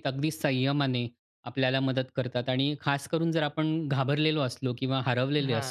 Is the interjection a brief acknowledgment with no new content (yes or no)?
yes